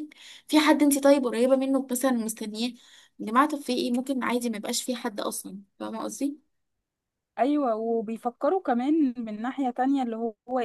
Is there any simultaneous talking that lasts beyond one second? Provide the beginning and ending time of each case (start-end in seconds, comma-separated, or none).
none